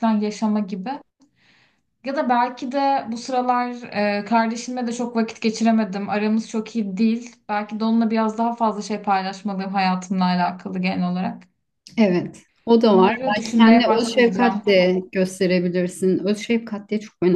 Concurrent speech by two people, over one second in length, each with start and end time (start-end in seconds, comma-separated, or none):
12.8-14.6